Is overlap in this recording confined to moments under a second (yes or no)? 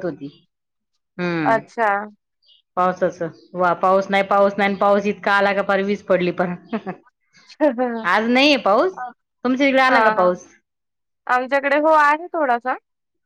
yes